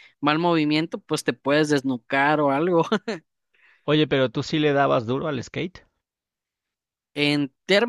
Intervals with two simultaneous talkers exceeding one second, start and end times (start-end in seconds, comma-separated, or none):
none